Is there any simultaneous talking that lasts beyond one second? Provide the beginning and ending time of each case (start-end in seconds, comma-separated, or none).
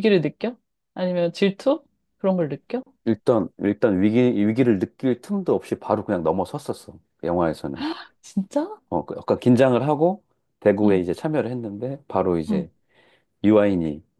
none